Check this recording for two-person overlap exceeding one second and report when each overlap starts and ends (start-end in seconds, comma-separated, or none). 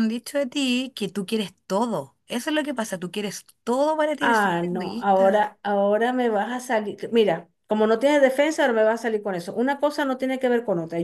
4.2-5.5